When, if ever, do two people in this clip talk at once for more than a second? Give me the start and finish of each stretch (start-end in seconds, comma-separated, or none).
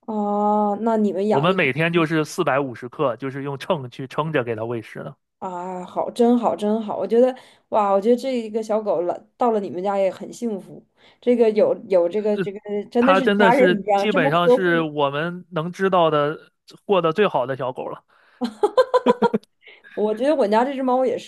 13.0-14.9